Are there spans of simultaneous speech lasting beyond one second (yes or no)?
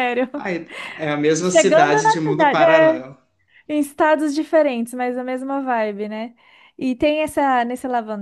yes